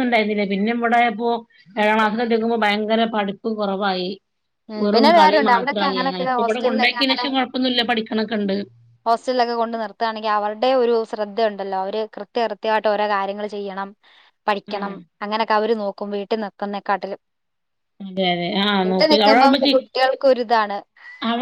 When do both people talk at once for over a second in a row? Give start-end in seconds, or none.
4.8-7.2